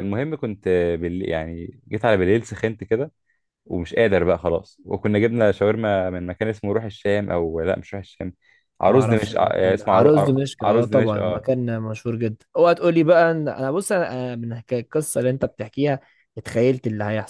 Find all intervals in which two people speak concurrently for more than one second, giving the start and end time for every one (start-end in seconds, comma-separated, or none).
8.8-11.4